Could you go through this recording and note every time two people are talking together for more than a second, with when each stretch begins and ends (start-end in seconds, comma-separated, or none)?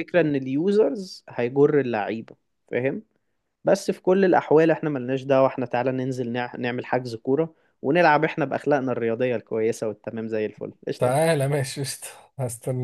none